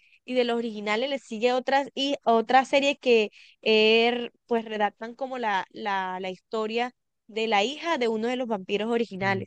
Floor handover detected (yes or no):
yes